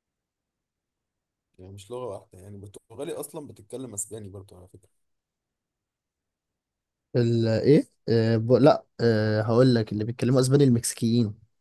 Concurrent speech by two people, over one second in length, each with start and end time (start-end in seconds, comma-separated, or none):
none